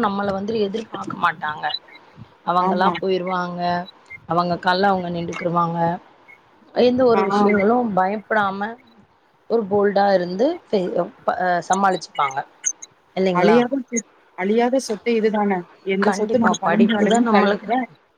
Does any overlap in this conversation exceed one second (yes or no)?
yes